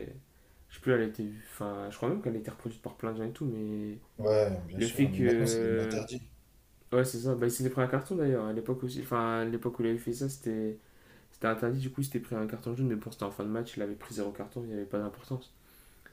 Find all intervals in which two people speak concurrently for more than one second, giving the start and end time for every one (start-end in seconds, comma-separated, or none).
4.8-6.0